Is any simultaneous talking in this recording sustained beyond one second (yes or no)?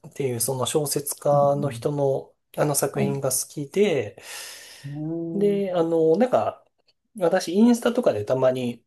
no